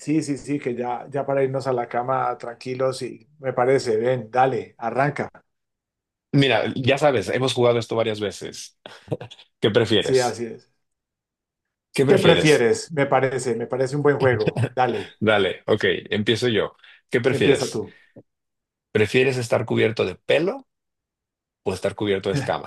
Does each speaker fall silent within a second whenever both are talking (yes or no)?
yes